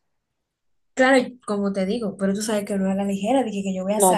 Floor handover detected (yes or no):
yes